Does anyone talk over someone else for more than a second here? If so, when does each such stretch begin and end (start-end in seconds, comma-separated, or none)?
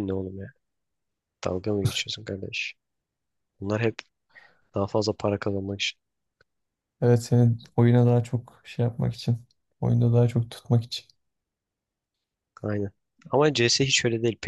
none